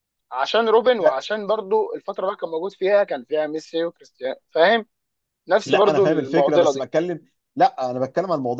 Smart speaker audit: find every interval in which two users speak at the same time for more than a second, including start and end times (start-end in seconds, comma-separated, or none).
5.7-6.9